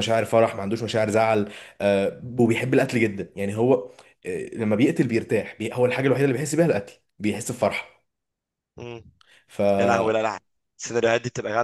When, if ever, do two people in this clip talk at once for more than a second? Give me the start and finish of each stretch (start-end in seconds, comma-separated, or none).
none